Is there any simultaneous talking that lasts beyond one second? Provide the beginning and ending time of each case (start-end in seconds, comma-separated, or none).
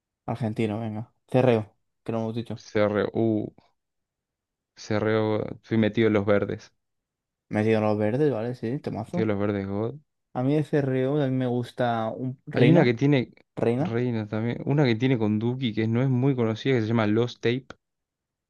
none